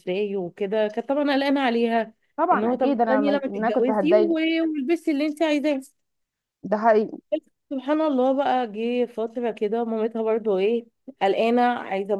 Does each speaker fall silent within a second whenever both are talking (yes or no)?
no